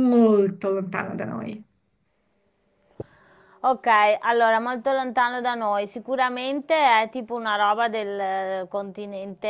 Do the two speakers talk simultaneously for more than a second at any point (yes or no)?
no